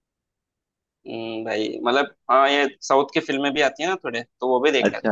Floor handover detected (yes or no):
yes